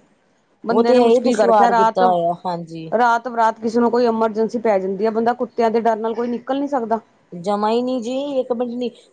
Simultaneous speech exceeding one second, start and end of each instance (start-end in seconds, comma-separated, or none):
0.7-2.0